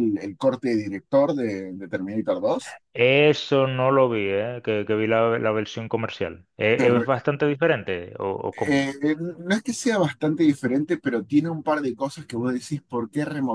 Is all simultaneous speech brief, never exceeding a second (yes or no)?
yes